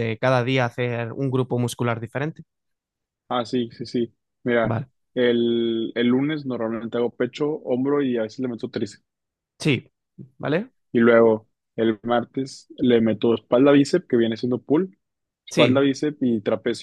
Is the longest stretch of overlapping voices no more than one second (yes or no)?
yes